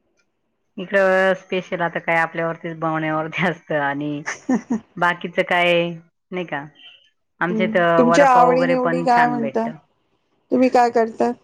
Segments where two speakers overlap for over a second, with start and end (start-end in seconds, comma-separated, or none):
7.5-9.6